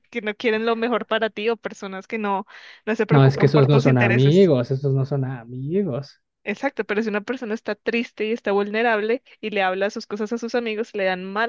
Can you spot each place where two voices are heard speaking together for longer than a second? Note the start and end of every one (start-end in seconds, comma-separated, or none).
3.1-4.5